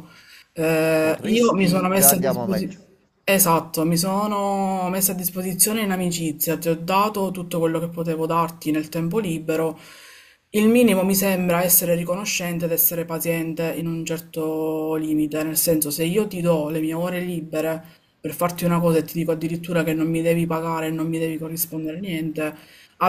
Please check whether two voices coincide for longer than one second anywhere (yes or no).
yes